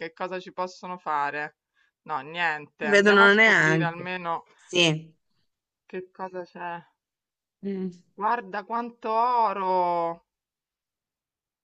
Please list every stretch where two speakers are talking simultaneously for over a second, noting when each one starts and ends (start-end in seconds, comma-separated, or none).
2.8-4.1